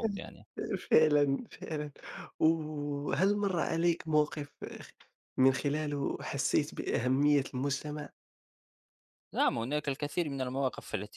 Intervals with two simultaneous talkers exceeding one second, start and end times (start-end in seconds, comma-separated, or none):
none